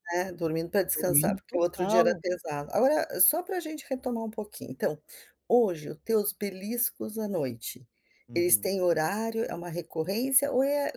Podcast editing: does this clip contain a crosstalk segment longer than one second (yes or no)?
yes